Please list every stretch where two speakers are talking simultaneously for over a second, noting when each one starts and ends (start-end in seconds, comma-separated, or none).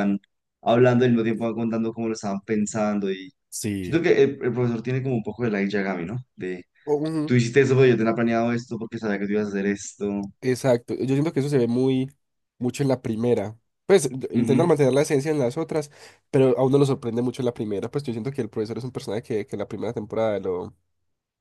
none